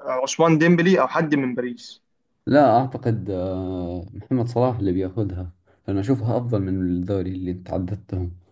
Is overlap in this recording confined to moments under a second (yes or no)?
yes